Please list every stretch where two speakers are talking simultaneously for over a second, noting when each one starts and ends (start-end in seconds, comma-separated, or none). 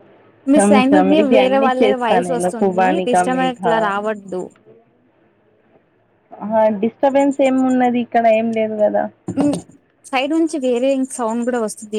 0.5-3.7